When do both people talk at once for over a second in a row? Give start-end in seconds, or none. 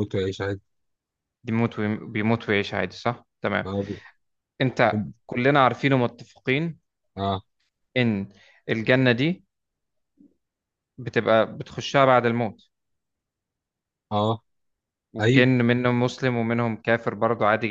none